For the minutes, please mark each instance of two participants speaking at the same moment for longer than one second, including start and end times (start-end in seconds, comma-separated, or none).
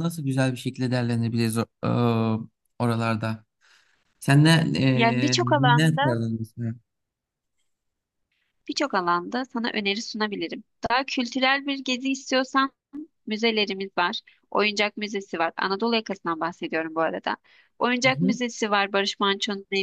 4.9-6.2